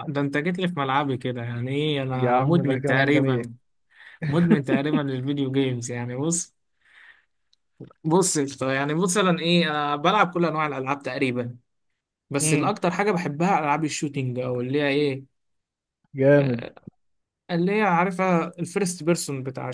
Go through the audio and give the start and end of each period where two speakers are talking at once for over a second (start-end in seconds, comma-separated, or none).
2.1-3.4